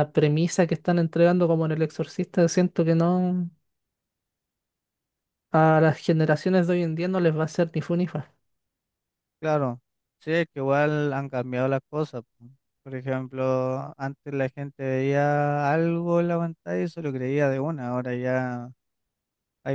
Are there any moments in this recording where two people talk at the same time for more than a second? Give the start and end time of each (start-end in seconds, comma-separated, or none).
none